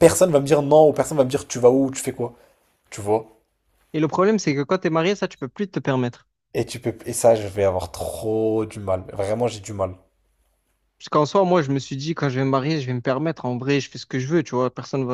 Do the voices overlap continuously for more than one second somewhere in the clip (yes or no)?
no